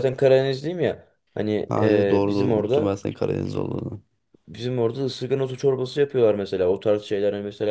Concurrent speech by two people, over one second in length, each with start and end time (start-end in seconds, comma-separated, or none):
1.7-3.0